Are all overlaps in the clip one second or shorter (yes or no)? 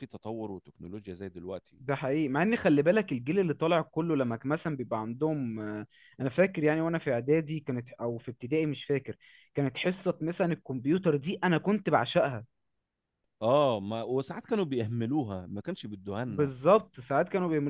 yes